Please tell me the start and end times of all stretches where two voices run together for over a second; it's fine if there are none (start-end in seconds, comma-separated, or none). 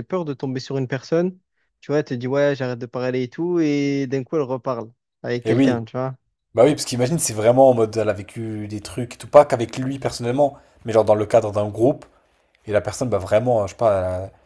none